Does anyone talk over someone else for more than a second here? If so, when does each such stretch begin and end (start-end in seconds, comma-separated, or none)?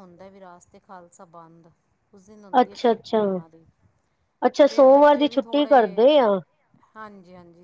4.7-6.0